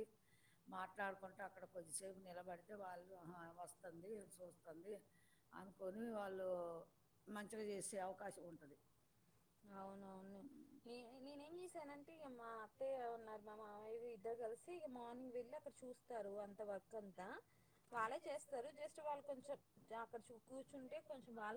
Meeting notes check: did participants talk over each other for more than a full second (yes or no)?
no